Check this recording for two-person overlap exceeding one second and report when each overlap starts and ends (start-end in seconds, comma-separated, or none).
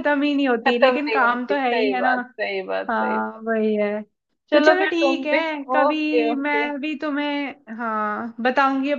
0.7-2.1, 4.5-6.7